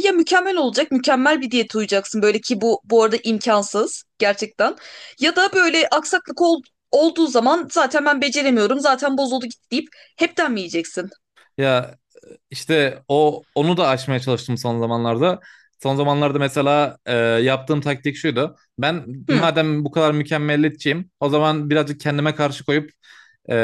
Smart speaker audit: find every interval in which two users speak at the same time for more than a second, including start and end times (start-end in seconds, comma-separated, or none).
none